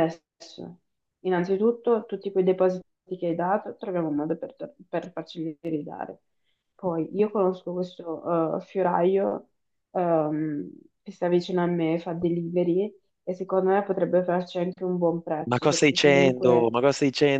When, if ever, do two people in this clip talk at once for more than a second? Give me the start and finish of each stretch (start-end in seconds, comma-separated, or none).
15.4-16.7